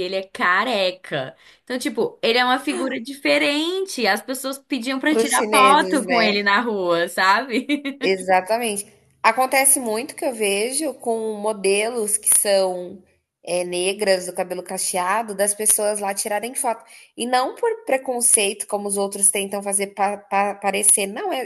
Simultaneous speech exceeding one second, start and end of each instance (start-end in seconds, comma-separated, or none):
5.1-6.4